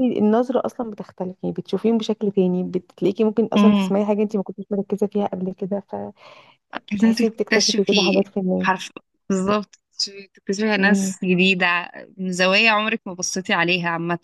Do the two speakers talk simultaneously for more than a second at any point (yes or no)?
yes